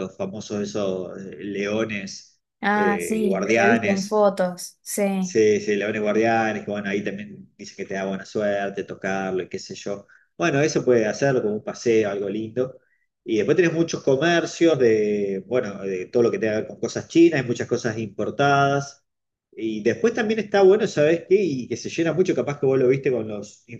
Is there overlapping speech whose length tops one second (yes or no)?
yes